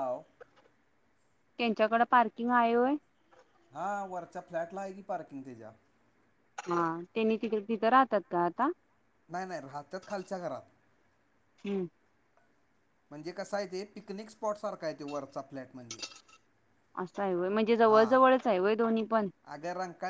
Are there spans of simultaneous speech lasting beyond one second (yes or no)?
no